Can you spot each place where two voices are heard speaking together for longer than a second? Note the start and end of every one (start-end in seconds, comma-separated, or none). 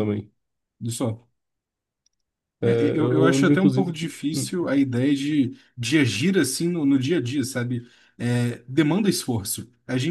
2.6-4.5